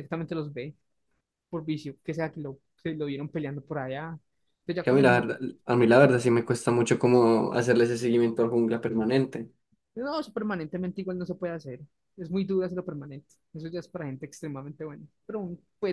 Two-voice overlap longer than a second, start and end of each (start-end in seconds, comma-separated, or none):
none